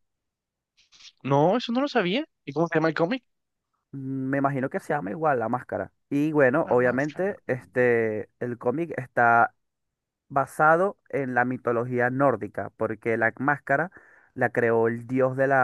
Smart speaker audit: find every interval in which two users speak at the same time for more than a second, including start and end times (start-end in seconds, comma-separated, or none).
6.6-8.1